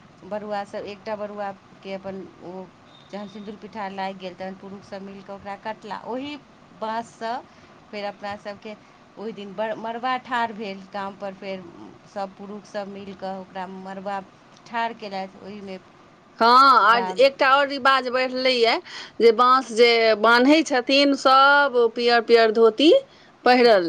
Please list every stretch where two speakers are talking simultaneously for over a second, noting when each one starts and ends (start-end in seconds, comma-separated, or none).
none